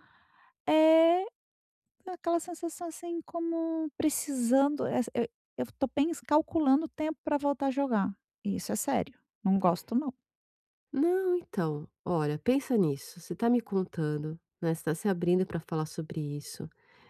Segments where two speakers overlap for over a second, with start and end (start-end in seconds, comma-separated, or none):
none